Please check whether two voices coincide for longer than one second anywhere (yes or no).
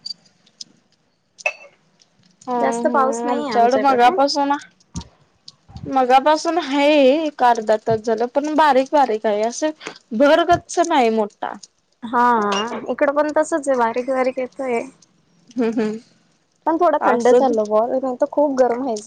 yes